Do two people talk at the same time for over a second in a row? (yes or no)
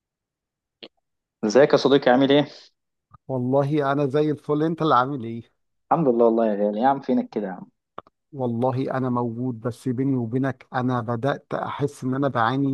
no